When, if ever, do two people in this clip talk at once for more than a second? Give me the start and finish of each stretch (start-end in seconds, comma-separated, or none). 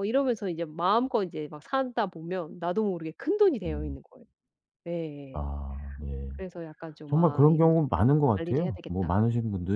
7.1-9.2